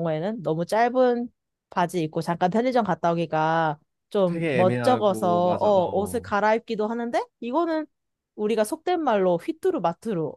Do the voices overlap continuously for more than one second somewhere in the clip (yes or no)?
yes